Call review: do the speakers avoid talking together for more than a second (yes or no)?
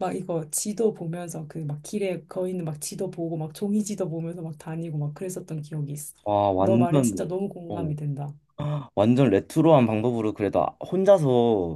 no